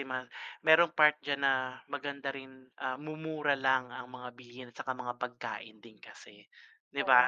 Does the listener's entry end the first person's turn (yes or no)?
yes